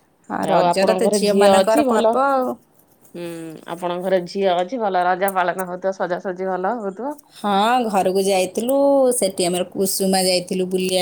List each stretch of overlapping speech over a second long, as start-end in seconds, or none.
0.6-2.1